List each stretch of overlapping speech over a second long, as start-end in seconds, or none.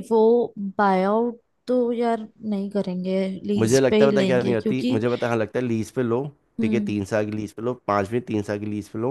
3.6-5.0